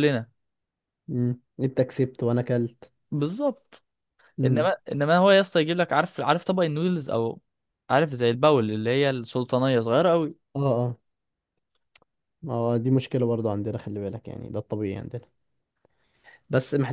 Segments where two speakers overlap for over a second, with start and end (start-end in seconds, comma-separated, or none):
none